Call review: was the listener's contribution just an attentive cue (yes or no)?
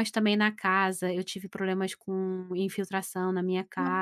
yes